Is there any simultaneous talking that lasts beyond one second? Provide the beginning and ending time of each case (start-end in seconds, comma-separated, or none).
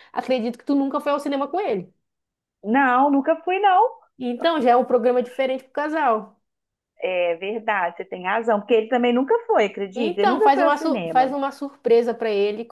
9.9-11.3